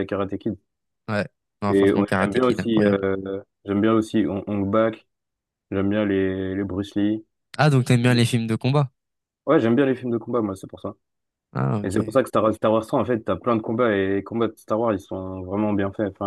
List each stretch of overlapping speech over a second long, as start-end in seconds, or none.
1.7-3.0